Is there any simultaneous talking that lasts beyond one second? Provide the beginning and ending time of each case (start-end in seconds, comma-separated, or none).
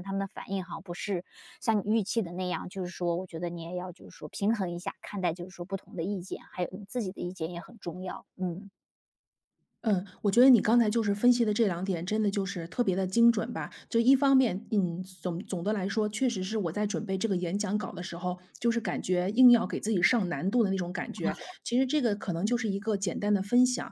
none